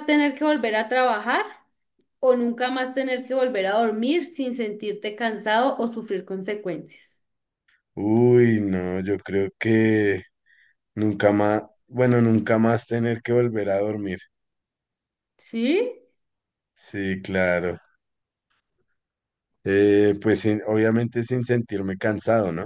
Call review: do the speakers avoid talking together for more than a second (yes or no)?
yes